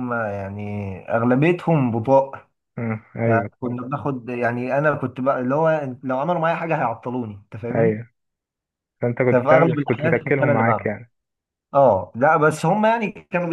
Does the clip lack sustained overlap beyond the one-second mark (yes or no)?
no